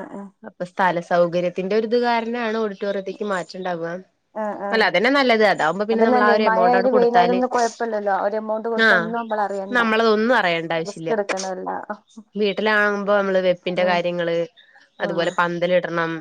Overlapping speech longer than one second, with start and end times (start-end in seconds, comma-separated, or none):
5.9-7.4